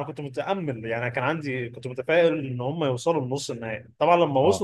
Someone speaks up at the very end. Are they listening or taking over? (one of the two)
listening